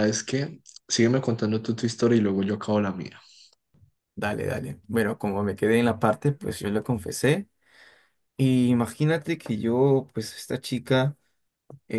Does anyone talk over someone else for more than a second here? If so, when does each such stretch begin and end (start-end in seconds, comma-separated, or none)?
none